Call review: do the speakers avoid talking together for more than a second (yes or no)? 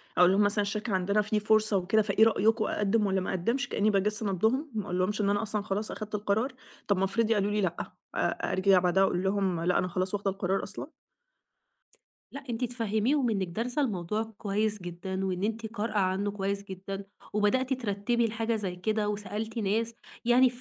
yes